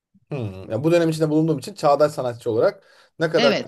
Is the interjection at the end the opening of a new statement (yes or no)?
yes